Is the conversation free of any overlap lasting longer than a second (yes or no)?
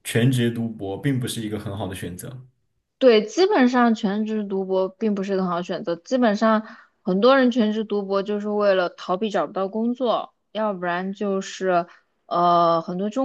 yes